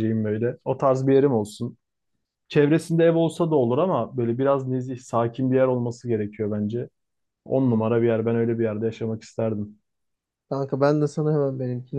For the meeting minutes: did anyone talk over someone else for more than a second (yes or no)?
no